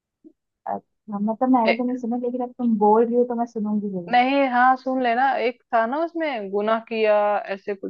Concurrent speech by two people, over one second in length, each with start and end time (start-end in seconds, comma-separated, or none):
none